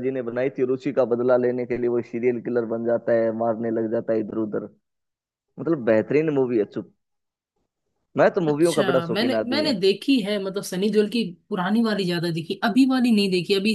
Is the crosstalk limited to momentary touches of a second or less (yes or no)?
no